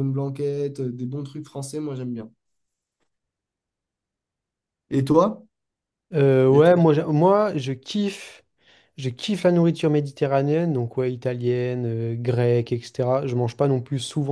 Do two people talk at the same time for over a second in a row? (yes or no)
no